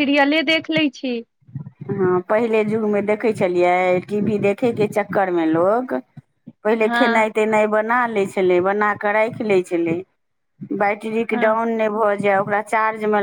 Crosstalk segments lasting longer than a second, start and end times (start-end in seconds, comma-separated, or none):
none